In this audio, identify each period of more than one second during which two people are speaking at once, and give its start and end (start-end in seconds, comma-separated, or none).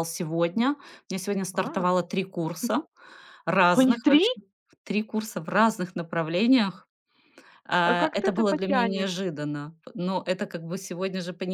7.8-9.3